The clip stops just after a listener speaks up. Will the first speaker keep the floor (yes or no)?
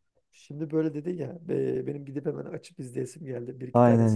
no